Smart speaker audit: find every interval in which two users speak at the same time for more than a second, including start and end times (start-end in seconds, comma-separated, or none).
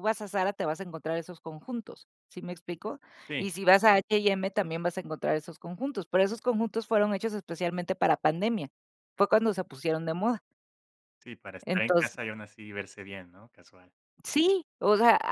none